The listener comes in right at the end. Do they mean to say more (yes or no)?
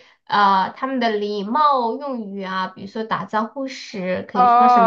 yes